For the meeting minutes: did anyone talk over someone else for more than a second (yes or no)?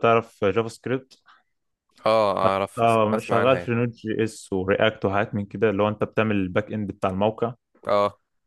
yes